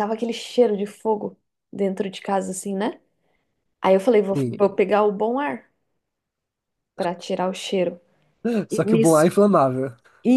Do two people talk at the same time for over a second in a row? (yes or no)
no